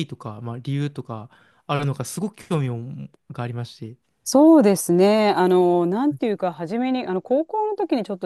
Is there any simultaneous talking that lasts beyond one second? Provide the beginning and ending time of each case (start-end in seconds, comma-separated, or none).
none